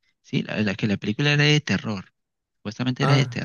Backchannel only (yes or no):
yes